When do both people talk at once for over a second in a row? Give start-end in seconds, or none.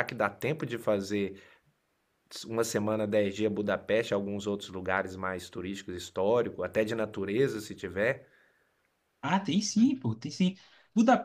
none